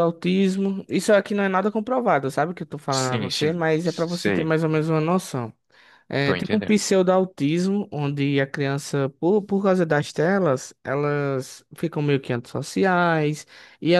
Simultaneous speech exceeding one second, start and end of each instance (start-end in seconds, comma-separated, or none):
2.9-4.5